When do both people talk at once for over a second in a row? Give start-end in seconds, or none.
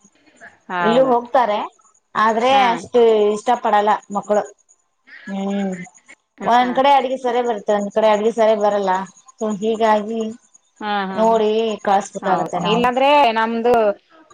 none